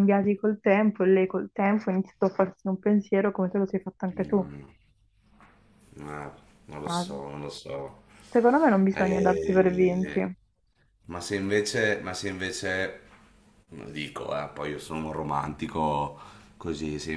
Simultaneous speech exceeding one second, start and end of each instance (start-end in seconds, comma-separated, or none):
8.9-10.2